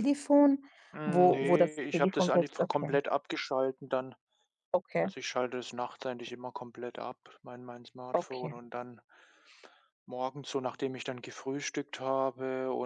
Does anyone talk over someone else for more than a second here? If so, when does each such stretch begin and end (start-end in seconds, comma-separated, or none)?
1.1-3.0